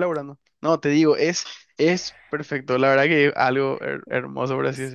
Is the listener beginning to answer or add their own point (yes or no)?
yes